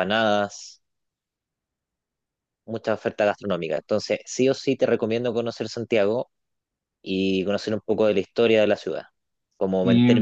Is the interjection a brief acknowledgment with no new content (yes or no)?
yes